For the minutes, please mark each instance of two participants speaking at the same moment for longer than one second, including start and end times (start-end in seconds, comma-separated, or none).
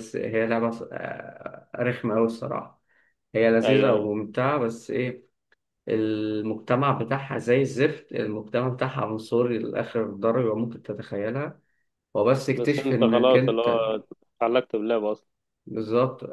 12.6-13.8